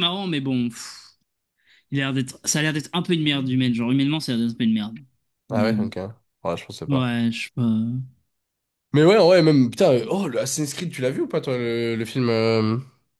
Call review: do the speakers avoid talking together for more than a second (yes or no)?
yes